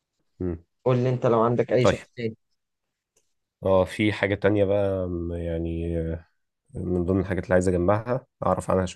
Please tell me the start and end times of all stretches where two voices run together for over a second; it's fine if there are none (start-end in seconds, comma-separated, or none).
none